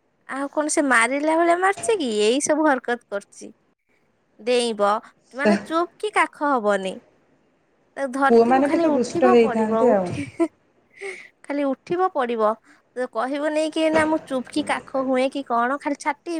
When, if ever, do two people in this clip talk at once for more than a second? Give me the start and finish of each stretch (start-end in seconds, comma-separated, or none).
8.3-10.3